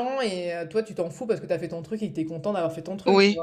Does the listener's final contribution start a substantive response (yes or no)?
yes